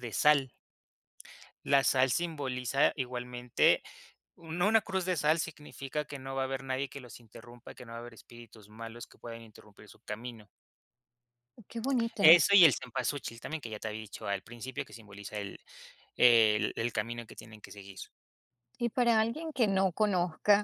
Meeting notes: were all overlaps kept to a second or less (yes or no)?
yes